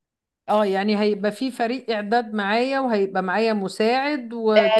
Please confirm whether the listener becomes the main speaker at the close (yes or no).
yes